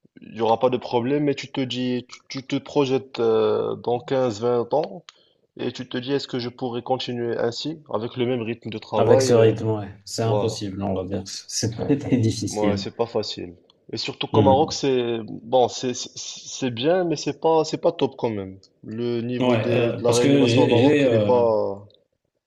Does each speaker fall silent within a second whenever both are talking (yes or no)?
no